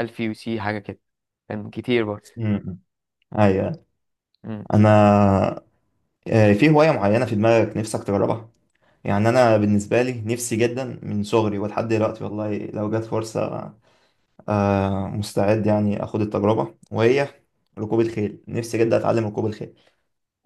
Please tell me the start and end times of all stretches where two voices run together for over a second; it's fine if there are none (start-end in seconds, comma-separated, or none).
none